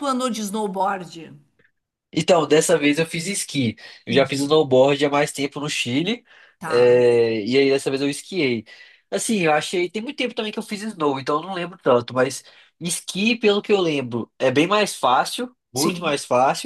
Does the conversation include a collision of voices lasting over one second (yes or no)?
no